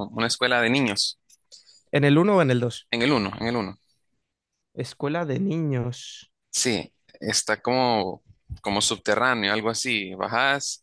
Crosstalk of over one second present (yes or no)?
no